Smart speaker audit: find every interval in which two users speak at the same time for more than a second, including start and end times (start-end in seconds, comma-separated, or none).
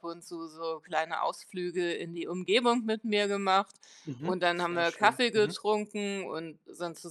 4.2-5.6